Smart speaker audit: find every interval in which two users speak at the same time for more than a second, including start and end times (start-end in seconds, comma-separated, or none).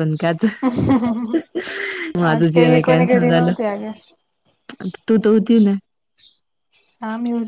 2.2-3.5